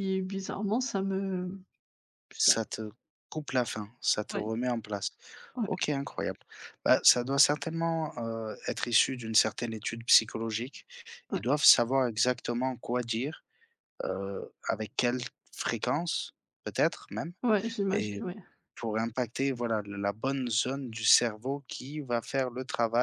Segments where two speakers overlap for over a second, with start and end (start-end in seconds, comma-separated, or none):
none